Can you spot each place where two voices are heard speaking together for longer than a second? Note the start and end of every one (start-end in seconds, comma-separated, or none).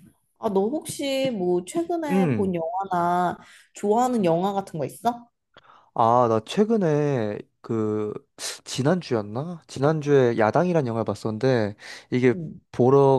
none